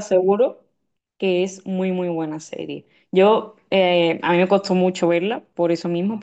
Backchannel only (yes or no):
yes